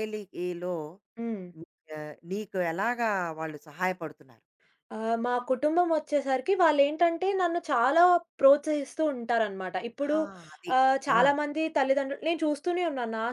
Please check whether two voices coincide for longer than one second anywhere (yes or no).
no